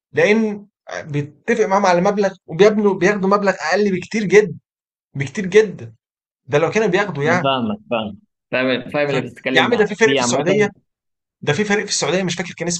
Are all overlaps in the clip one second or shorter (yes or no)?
no